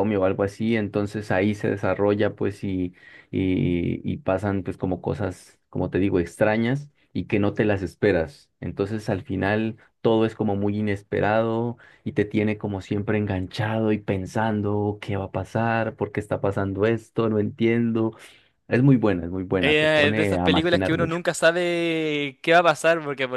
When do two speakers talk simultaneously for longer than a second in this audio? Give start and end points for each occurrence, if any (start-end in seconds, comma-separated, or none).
19.6-21.2